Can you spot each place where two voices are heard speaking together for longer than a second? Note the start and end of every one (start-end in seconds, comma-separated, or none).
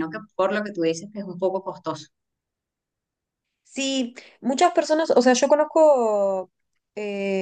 none